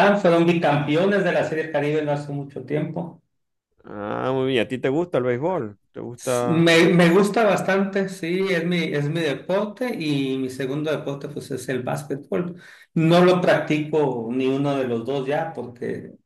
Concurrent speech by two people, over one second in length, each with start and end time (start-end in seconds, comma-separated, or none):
none